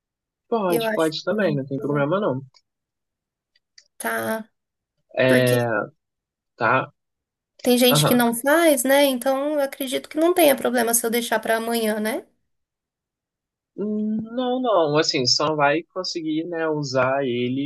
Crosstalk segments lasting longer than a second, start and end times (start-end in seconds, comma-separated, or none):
0.7-2.2